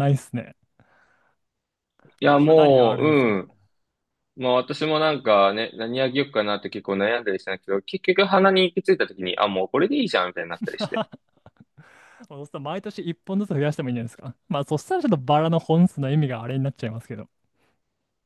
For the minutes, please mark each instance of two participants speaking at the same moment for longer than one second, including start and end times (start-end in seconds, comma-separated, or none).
2.2-3.4